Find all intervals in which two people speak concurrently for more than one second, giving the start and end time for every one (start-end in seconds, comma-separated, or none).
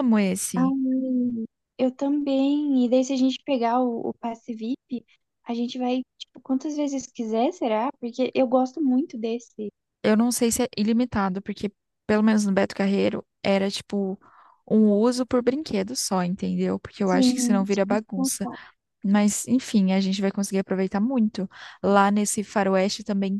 17.0-18.3